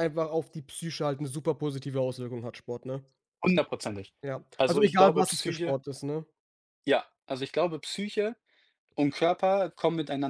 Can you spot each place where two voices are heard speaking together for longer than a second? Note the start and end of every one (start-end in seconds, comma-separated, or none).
4.5-5.8